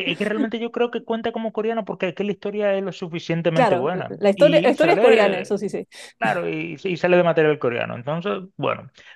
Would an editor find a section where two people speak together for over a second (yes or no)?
yes